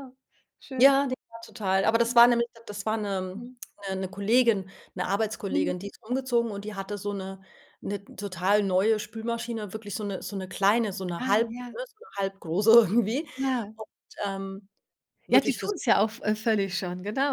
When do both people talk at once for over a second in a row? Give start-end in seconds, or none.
none